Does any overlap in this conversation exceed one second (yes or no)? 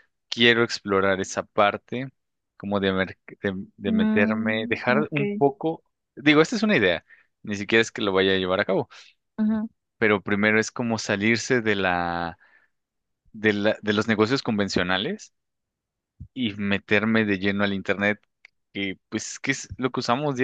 yes